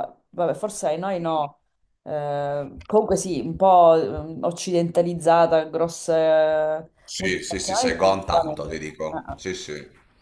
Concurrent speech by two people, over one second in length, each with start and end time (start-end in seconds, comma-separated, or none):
7.0-9.4